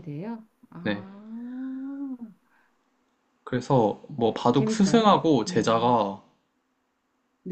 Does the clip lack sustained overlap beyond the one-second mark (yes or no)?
no